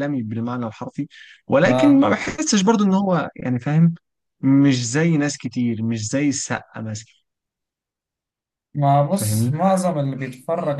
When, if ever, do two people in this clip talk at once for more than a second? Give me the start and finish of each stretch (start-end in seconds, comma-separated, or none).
none